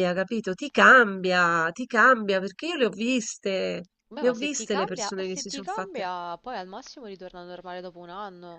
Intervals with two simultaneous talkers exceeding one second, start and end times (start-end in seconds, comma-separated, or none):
4.1-6.1